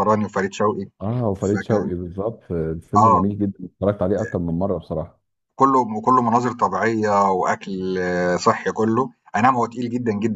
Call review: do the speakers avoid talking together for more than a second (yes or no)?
yes